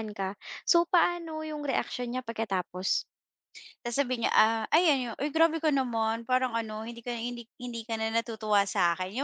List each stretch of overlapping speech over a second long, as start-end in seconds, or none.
none